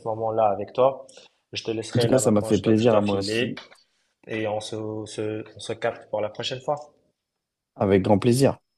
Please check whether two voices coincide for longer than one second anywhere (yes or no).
yes